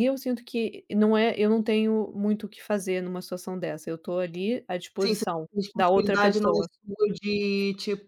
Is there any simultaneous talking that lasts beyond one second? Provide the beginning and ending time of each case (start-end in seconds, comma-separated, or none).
5.0-6.7